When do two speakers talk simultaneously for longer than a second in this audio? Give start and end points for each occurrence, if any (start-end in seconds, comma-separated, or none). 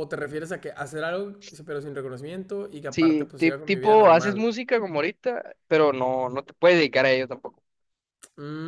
2.9-4.4